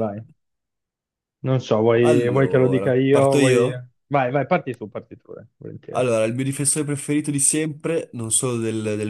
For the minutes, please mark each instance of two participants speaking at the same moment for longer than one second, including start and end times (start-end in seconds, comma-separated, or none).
2.0-3.7